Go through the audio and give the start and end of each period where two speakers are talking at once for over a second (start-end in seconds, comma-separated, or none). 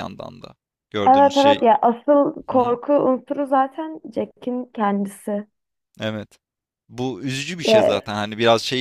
none